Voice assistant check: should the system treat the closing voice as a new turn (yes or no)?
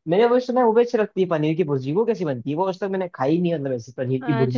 yes